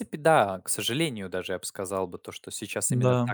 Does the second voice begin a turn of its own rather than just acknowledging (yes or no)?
no